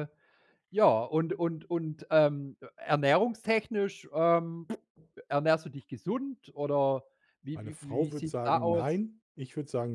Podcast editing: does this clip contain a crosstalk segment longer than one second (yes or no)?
yes